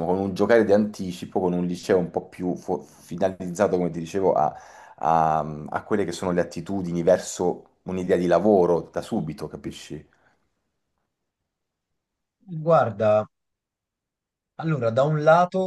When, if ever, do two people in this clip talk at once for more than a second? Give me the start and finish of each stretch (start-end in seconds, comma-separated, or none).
none